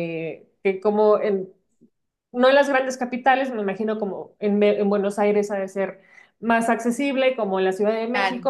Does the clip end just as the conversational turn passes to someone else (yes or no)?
no